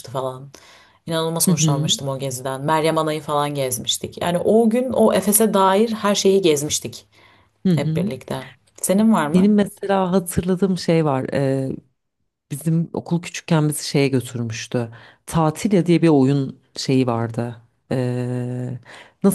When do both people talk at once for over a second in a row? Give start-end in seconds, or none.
none